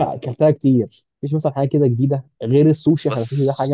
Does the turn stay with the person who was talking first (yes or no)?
yes